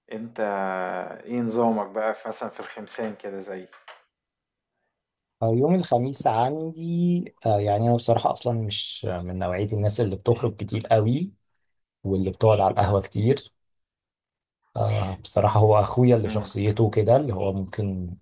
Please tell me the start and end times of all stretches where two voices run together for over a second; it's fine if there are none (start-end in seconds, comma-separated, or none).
none